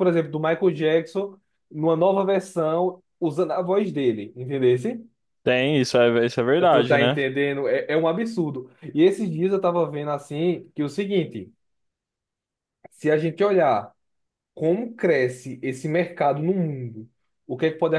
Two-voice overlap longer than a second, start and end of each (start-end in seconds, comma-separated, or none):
none